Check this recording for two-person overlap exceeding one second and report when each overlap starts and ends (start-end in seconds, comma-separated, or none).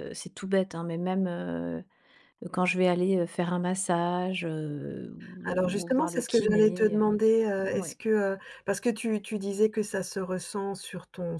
5.5-7.0